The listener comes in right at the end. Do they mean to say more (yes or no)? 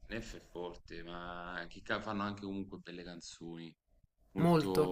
yes